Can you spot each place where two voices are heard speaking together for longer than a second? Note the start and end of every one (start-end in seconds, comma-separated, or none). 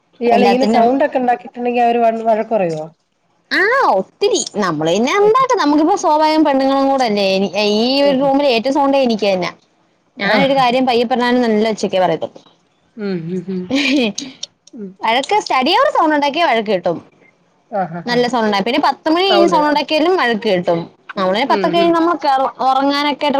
none